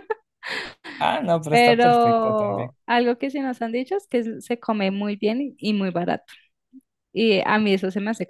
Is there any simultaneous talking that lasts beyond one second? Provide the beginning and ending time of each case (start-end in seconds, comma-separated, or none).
1.5-2.7